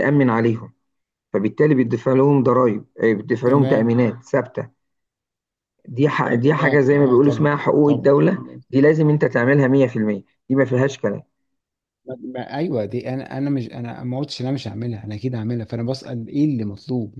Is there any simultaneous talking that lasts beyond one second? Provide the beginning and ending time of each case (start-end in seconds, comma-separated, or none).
6.2-8.1